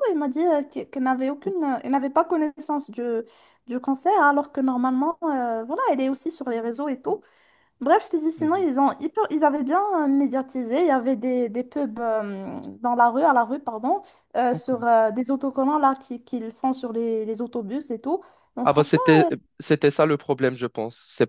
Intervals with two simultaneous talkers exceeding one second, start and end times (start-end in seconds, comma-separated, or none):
none